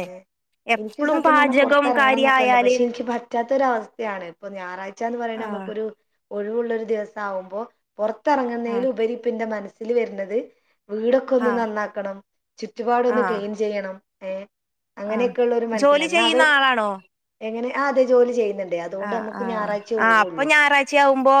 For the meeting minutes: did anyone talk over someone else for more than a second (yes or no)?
yes